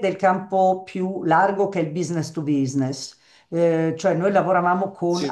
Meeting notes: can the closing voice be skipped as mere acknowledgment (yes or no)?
yes